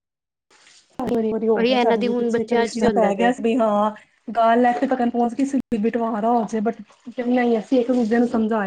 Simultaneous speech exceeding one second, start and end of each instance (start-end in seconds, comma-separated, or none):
1.6-3.3